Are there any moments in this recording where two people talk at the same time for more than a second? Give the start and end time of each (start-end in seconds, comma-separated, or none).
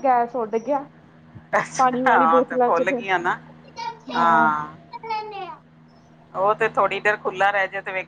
1.8-3.3